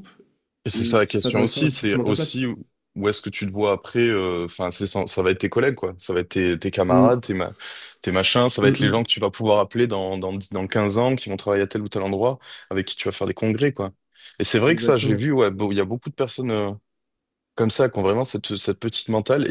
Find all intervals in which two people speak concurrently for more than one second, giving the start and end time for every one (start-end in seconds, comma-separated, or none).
0.7-2.4